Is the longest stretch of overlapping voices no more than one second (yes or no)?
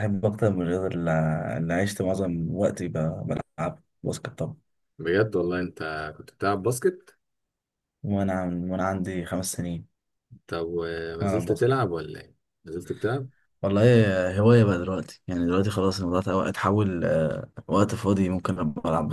yes